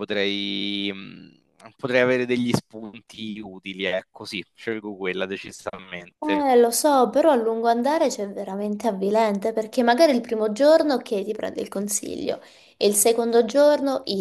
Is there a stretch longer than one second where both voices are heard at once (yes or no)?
no